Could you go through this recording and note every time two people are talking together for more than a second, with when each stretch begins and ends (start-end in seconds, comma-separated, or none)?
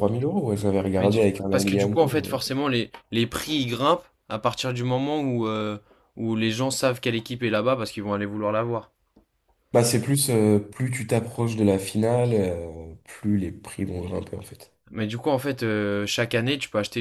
1.0-2.4